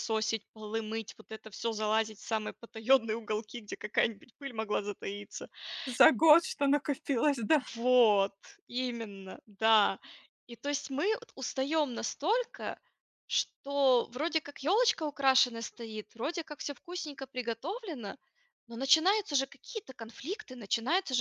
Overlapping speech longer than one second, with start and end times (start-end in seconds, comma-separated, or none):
none